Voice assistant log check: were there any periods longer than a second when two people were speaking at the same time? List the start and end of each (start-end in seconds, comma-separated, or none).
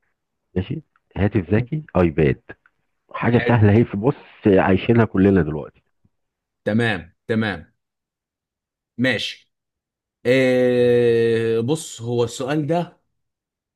none